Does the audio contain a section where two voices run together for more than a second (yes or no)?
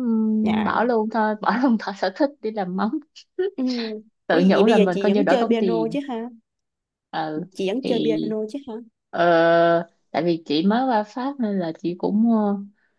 yes